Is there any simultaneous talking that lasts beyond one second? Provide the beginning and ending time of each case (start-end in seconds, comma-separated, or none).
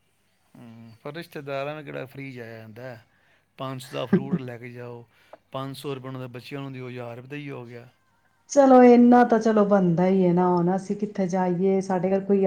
none